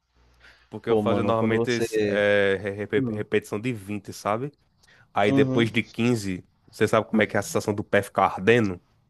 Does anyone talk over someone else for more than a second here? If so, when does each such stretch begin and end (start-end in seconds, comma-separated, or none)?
0.9-2.2